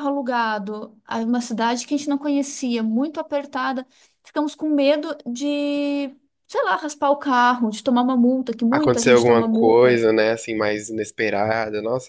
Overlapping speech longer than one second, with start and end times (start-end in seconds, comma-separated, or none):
8.7-10.1